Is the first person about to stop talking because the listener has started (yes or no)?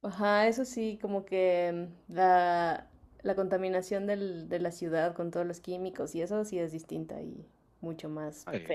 yes